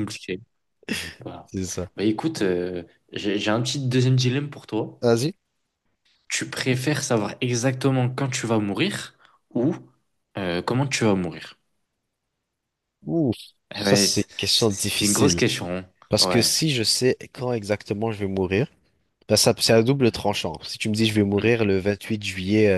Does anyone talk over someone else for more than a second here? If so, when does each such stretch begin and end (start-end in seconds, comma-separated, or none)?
13.8-15.4